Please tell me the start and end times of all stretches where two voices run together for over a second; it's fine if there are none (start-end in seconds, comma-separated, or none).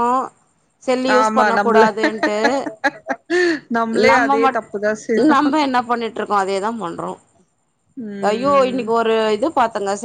none